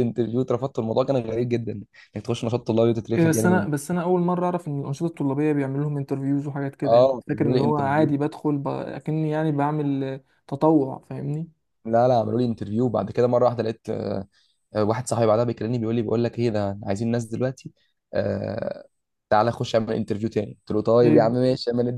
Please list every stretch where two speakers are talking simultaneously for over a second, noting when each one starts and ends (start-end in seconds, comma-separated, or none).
6.8-8.1